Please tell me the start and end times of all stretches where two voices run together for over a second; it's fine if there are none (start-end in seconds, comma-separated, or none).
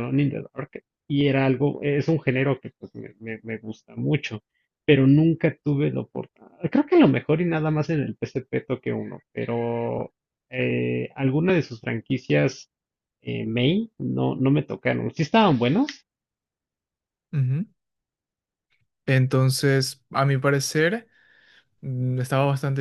none